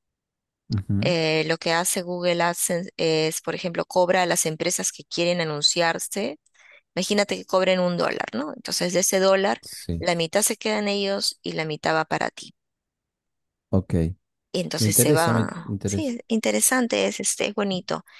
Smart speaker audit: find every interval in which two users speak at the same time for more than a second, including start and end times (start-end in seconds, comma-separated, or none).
14.8-16.1